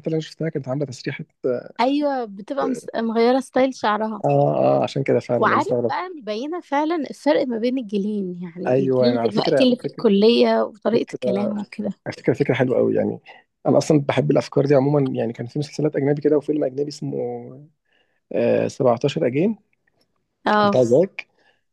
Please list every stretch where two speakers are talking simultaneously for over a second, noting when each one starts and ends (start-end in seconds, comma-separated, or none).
8.7-10.1